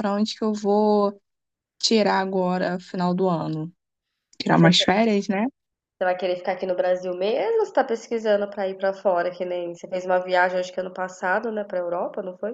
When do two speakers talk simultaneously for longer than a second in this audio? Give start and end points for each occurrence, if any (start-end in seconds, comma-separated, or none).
none